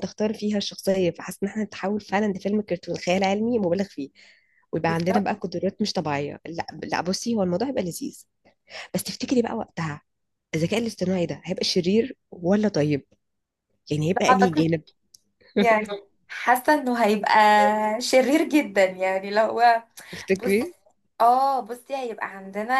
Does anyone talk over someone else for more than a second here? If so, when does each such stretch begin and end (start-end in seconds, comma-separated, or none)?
none